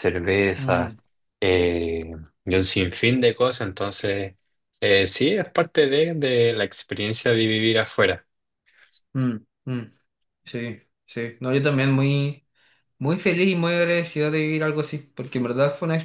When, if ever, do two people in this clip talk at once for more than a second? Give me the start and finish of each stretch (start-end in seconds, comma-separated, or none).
none